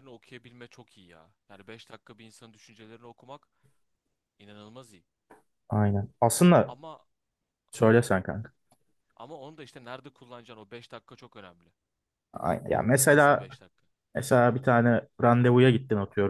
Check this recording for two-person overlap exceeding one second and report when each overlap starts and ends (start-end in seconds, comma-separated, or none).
none